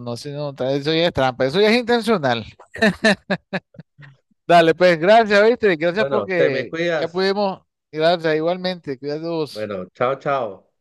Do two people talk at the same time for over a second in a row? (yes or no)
yes